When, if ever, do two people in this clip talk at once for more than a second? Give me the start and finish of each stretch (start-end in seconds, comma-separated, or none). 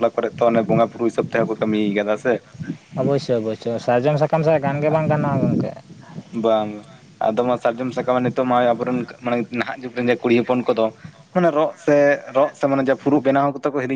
none